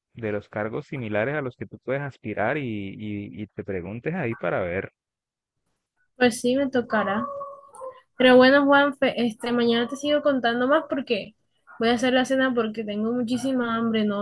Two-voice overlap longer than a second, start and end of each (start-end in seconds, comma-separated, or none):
none